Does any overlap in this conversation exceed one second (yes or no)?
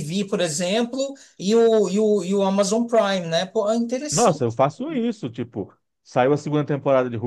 no